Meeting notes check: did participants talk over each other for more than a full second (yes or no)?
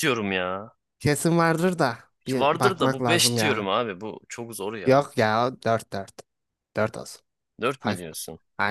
yes